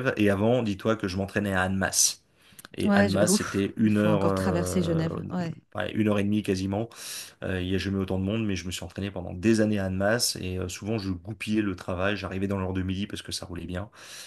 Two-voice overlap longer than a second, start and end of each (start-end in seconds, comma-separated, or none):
2.9-5.0